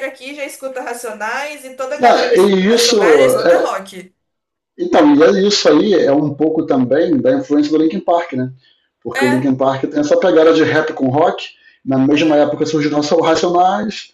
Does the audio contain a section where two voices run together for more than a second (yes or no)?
yes